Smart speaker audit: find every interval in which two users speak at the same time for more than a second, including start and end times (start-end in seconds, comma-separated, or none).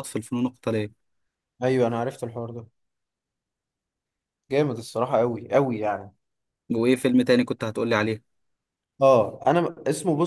none